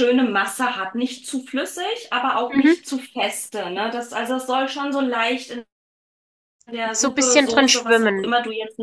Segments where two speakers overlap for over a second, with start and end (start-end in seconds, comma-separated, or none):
6.9-8.3